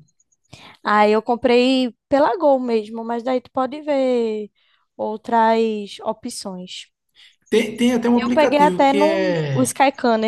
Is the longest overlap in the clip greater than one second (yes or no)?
yes